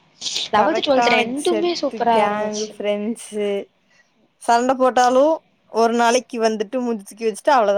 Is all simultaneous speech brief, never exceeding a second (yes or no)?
no